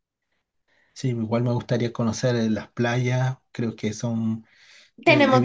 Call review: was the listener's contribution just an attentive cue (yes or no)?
no